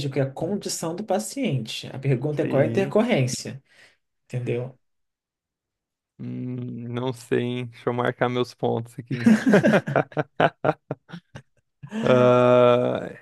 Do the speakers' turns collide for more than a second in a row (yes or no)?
no